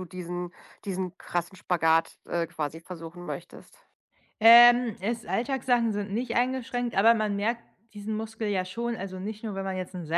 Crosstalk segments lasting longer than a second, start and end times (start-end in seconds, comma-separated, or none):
none